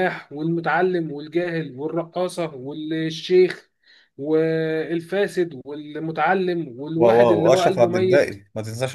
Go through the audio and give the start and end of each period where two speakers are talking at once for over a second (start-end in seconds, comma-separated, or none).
7.0-8.4